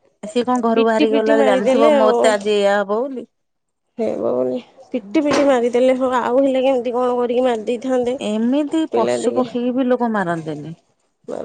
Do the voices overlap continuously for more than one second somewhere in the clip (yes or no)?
yes